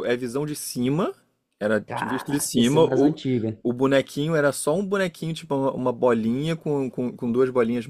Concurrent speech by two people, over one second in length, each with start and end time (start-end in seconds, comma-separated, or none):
1.9-3.2